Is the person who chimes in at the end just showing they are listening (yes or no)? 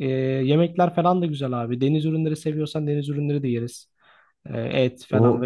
yes